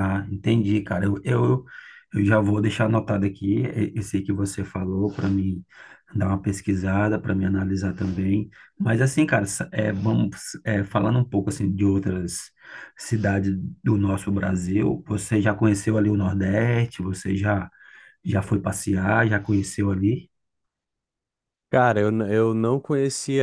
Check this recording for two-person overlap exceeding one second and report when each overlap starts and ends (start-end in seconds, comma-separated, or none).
none